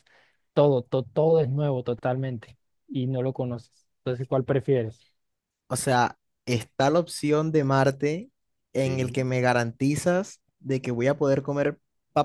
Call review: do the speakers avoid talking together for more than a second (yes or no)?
yes